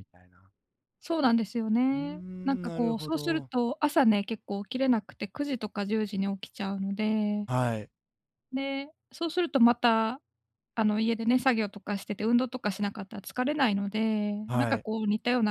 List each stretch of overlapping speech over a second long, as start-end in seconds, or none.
1.9-3.5